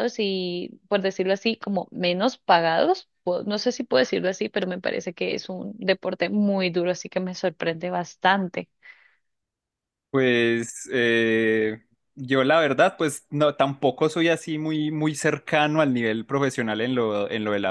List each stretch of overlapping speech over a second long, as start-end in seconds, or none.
none